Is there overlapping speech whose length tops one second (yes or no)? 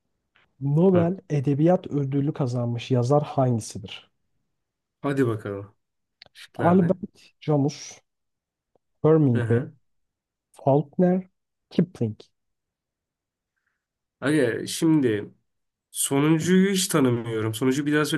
no